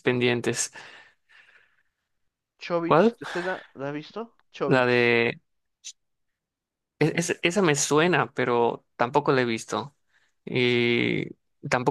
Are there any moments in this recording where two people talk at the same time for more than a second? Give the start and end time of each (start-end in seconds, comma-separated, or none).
none